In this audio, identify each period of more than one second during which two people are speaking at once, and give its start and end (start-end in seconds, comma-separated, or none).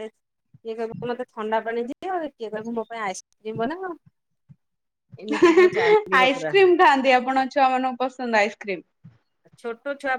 none